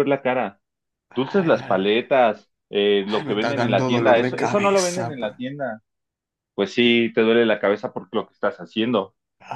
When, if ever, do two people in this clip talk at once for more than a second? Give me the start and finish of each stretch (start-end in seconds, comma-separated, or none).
3.2-5.3